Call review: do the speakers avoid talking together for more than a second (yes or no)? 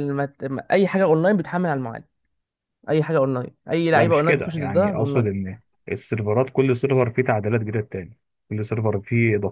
no